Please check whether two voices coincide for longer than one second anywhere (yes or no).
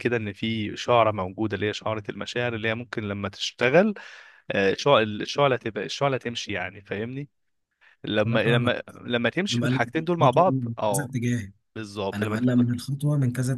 yes